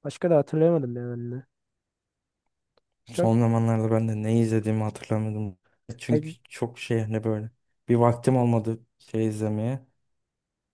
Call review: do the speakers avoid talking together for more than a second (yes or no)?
yes